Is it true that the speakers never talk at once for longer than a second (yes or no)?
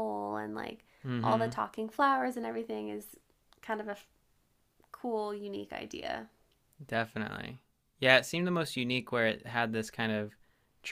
yes